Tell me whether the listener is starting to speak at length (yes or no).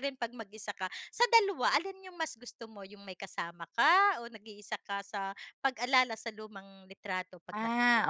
yes